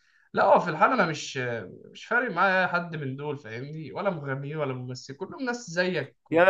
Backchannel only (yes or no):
no